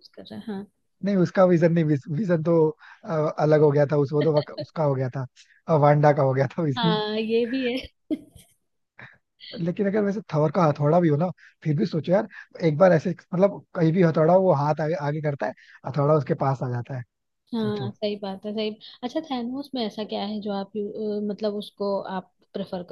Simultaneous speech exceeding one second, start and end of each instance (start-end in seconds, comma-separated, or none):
none